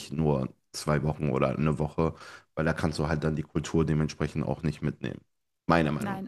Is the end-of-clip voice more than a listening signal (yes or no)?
yes